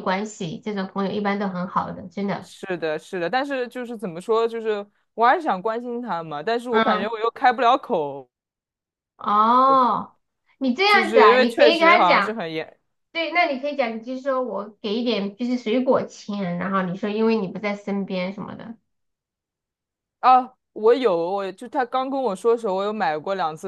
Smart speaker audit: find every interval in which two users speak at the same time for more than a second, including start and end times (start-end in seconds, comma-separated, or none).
10.8-12.4